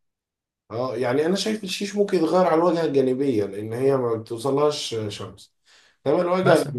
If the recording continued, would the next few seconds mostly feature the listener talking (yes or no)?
no